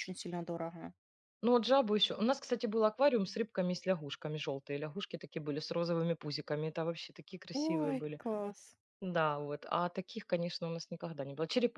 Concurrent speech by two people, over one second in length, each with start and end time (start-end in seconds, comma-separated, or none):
none